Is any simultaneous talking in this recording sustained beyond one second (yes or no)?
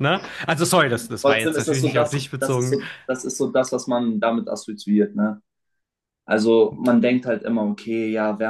yes